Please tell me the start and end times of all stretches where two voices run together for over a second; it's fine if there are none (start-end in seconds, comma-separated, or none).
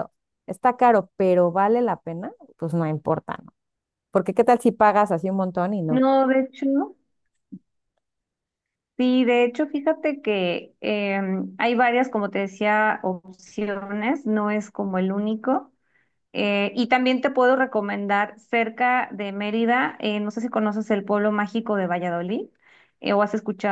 none